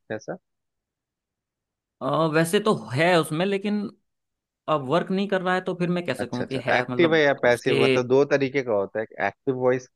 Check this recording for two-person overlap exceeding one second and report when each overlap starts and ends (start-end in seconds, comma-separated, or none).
6.2-7.8